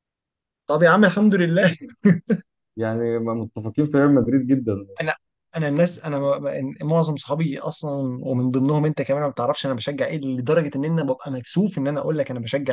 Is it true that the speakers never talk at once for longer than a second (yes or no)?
yes